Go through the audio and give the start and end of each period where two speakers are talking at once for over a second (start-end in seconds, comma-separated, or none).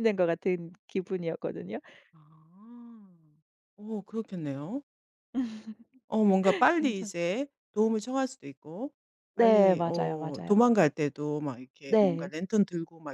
9.3-10.6